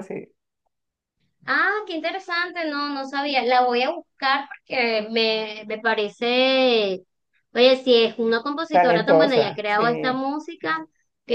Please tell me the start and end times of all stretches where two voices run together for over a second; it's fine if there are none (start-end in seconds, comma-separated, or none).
8.7-10.2